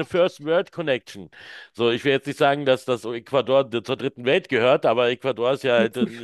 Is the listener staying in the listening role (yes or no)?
yes